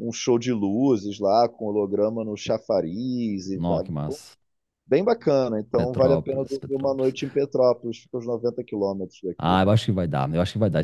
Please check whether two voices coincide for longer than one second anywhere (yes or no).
yes